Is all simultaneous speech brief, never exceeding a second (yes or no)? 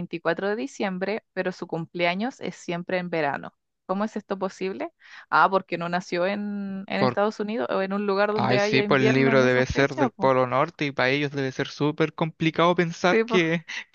no